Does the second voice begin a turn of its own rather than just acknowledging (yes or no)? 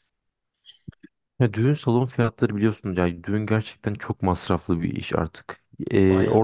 no